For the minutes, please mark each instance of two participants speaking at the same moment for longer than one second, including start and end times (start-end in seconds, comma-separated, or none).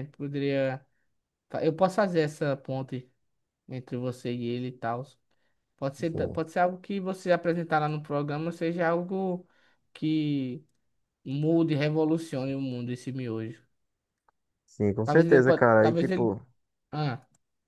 15.0-16.4